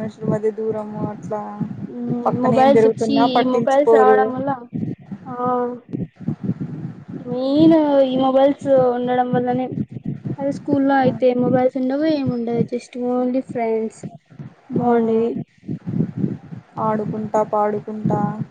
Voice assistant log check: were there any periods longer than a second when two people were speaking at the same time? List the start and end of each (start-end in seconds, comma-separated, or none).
2.5-4.2